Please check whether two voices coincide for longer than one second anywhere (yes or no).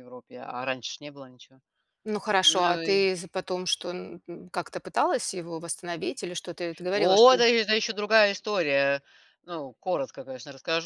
no